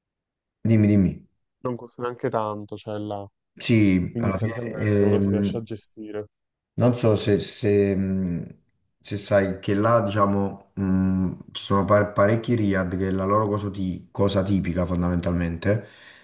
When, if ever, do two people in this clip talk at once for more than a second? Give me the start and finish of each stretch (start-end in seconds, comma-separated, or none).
4.1-5.6